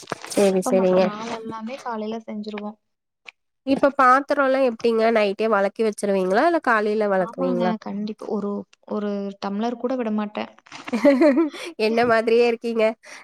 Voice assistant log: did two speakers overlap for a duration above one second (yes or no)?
no